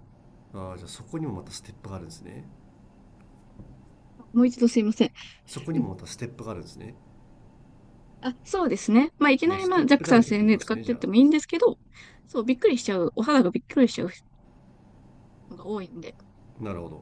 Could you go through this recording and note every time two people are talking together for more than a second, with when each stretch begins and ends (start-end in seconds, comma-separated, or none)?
9.4-11.1